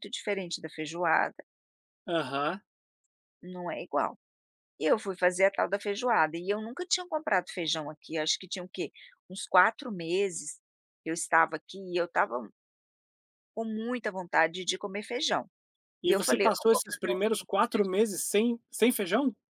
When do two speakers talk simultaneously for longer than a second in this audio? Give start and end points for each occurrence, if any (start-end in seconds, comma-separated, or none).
16.1-17.9